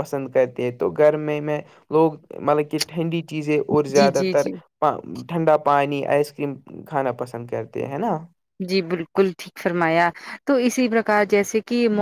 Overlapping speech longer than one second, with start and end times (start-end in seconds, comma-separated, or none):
none